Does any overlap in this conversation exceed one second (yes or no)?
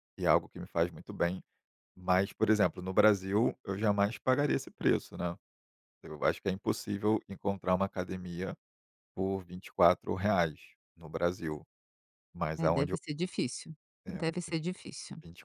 no